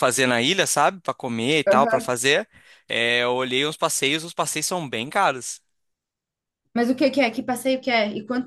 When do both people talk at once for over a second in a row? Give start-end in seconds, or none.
none